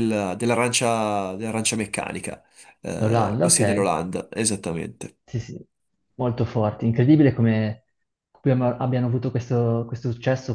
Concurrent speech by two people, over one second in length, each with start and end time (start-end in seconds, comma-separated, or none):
none